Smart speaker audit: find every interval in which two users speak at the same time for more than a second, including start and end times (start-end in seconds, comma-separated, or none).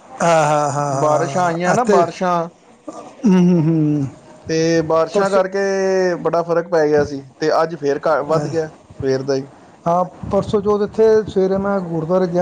1.0-2.3